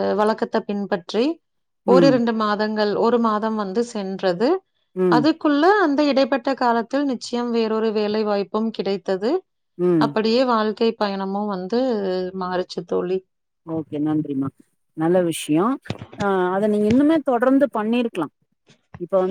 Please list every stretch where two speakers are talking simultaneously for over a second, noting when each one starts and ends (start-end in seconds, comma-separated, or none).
none